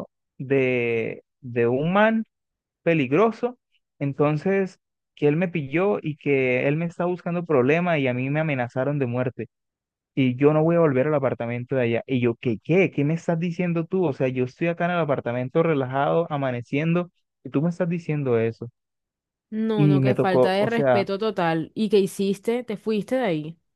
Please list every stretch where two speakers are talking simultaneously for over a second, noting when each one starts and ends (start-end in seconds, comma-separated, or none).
19.8-21.0